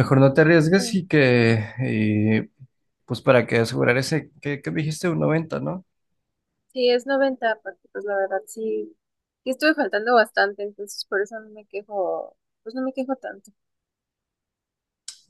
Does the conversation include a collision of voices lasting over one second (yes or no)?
no